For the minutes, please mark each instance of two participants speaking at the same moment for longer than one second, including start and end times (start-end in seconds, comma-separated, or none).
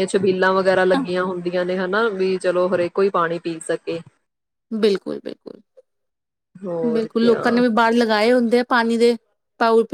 none